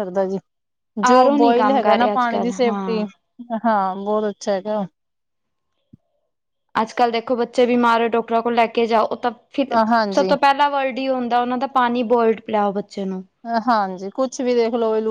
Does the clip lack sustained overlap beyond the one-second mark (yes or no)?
no